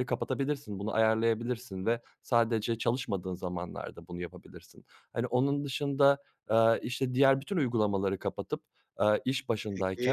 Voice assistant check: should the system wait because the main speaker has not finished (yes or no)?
yes